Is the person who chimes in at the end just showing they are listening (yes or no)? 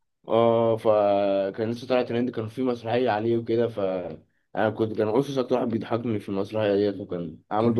no